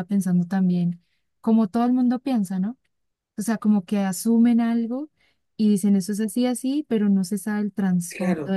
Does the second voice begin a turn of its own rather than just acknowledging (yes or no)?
yes